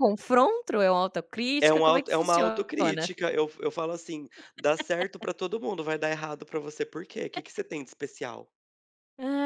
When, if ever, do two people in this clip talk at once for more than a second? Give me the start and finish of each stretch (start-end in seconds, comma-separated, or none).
1.6-3.1